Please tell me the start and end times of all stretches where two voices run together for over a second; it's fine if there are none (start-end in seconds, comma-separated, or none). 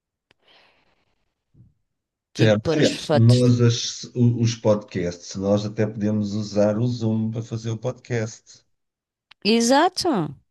2.4-3.6